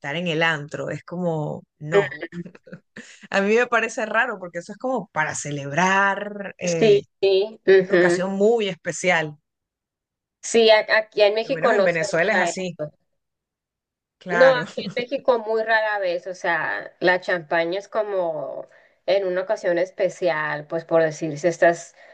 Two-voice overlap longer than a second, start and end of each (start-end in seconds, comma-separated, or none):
11.4-12.8